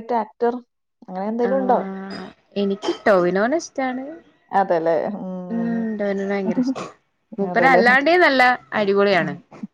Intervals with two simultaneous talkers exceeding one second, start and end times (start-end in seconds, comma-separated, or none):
none